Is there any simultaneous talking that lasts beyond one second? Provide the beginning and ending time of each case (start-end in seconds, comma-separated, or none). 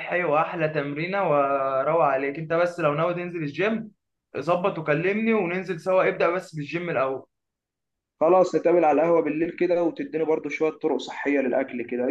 none